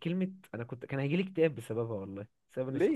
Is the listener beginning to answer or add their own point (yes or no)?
yes